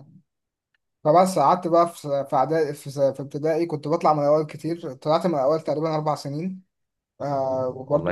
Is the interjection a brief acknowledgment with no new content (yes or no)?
yes